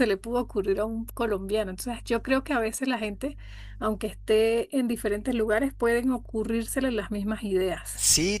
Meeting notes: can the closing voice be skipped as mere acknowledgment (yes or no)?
no